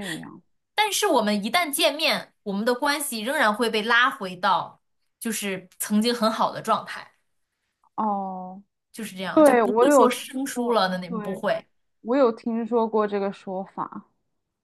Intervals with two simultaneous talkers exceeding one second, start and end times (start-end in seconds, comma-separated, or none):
9.3-11.4